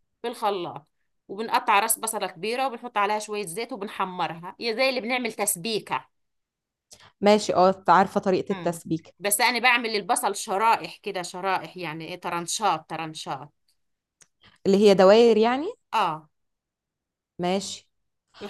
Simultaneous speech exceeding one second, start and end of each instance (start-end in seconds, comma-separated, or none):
none